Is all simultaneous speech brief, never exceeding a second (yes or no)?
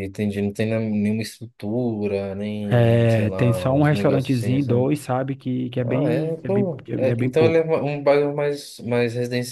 no